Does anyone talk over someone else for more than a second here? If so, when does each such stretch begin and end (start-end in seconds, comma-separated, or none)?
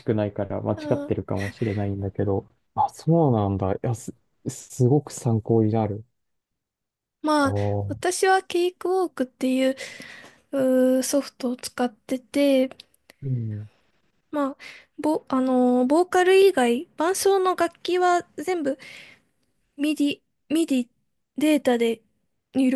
none